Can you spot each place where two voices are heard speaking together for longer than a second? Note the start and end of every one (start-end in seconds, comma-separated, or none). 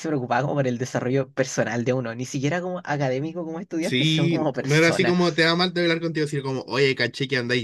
3.8-5.2